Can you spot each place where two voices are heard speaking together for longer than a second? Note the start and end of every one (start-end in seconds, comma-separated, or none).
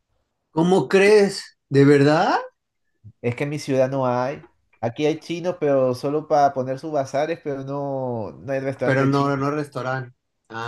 none